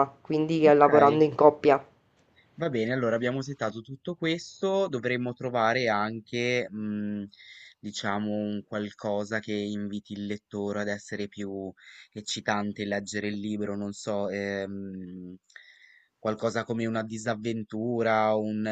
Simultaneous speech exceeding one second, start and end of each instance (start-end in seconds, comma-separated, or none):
none